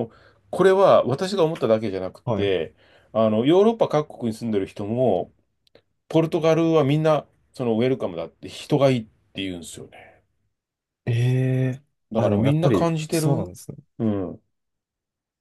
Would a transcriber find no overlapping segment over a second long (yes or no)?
no